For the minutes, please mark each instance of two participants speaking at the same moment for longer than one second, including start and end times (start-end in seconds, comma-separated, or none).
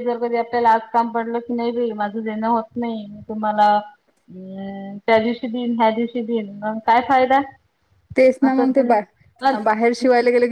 none